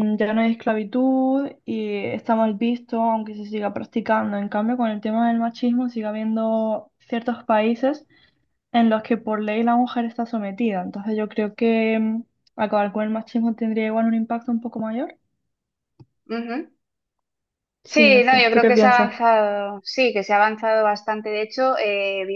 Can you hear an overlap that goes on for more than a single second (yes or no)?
yes